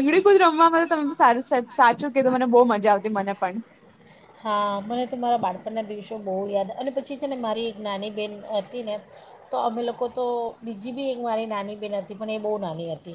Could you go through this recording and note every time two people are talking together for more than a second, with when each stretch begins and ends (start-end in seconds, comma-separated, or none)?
none